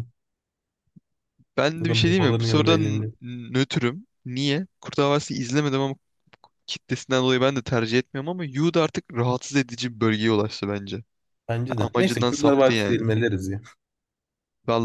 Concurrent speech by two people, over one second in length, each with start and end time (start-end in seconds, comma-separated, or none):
1.8-3.1, 11.8-13.1